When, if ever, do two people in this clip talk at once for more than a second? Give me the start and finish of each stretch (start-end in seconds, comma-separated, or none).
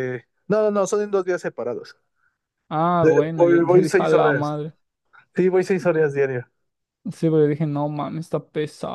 3.0-4.5